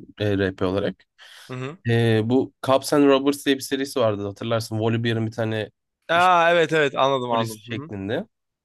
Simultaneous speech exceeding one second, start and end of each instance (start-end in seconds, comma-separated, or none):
none